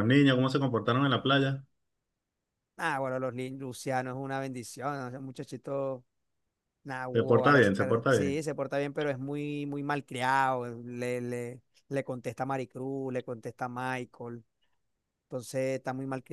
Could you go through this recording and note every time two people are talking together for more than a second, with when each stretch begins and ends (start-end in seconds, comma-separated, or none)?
7.1-8.4